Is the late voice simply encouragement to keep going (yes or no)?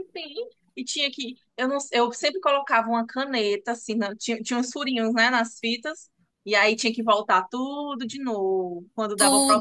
no